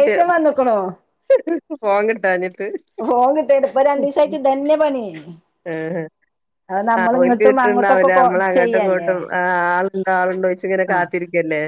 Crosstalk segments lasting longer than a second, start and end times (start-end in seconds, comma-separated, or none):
6.8-9.1